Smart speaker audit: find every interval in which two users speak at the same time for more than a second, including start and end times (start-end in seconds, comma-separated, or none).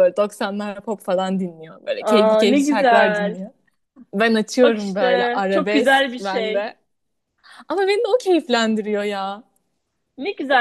2.0-3.4, 4.6-6.7